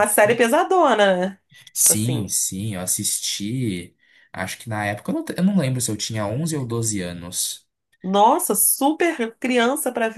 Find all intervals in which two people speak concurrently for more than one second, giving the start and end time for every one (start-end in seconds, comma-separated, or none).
none